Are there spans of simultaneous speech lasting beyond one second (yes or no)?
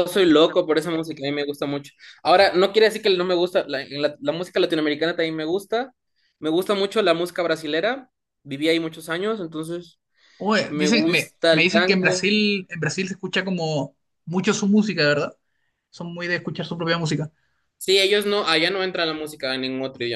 yes